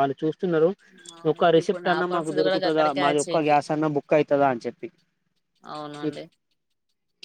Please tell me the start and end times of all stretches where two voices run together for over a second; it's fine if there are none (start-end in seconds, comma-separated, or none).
1.3-3.6